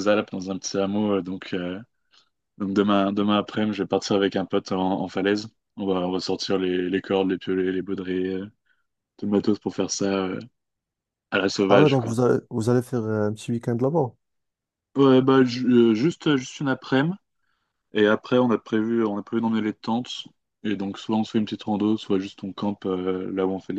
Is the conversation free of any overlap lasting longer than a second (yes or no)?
yes